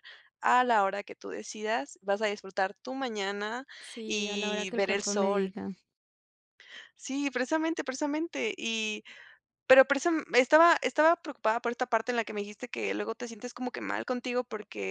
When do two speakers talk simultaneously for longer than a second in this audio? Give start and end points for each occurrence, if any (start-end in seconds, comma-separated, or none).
4.0-5.5